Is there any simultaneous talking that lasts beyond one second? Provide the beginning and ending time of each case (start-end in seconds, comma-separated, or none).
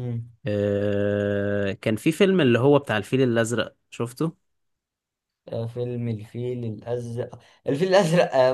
none